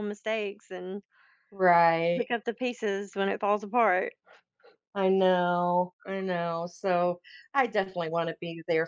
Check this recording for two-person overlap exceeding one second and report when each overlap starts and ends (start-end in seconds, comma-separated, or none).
none